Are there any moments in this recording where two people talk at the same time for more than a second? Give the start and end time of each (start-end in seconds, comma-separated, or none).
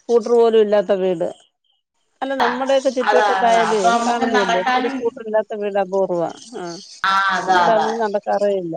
3.1-5.0